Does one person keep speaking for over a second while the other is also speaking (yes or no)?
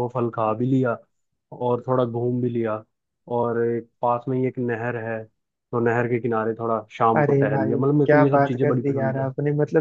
yes